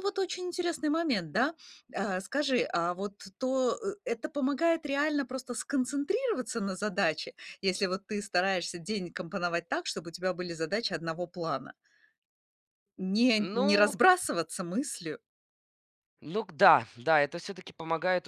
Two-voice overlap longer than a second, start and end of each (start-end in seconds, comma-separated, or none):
none